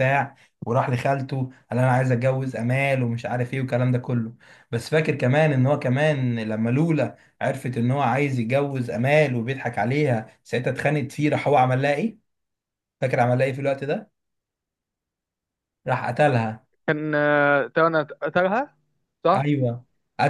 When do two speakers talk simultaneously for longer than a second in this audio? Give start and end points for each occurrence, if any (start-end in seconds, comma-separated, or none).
none